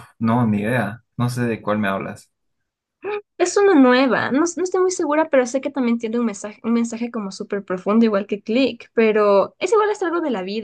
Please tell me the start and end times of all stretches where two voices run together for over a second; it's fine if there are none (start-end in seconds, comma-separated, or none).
none